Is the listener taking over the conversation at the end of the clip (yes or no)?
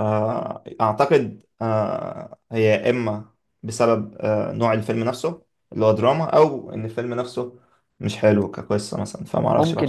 yes